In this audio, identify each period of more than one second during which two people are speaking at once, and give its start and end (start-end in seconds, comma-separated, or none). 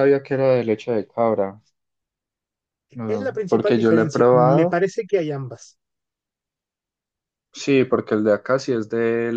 3.1-4.8